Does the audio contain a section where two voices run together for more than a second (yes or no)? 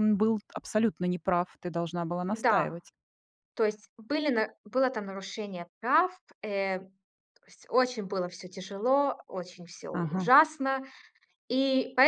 no